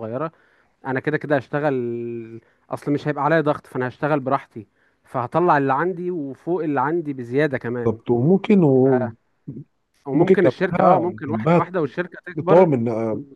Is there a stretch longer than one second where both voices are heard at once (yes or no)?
yes